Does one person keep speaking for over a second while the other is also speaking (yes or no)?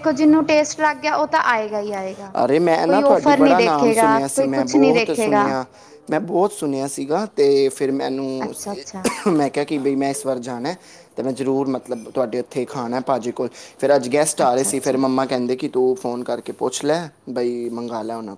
yes